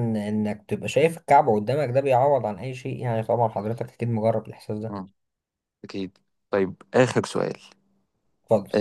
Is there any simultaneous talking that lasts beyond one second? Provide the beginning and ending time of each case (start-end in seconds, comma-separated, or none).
none